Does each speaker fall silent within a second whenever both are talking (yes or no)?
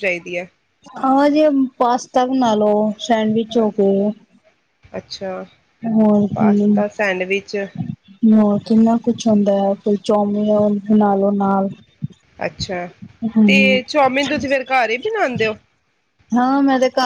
yes